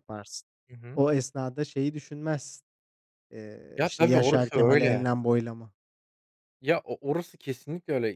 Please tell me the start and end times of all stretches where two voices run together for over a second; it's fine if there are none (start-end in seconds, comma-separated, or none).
3.8-5.1